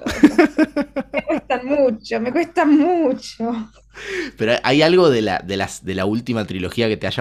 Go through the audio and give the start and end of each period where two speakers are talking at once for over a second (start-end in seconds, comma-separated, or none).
none